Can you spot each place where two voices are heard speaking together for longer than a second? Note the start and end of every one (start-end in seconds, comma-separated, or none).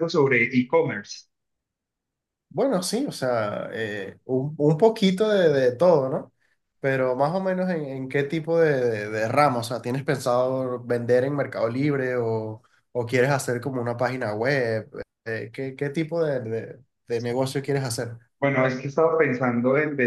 none